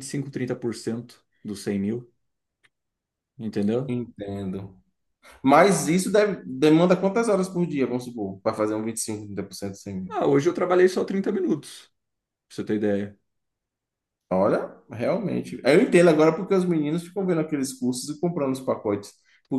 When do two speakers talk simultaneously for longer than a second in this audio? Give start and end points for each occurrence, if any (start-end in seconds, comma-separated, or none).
none